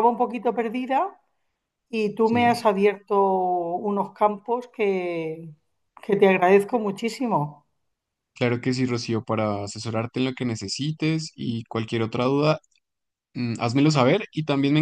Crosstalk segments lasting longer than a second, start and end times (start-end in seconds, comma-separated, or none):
none